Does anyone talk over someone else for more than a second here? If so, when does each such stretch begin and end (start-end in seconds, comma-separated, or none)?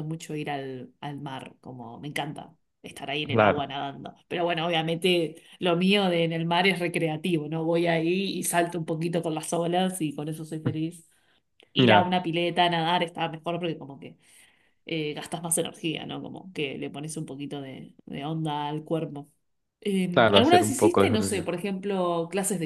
20.1-21.5